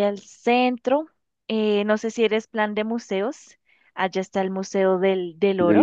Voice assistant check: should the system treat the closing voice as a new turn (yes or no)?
yes